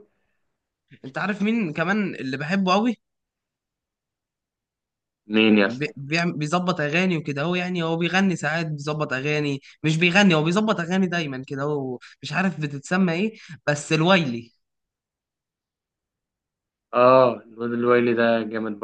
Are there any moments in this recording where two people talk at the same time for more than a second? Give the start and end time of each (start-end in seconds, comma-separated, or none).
none